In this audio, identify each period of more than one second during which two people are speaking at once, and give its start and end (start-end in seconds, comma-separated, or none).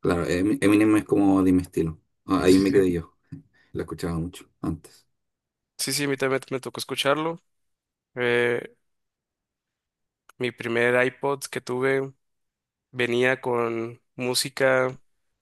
none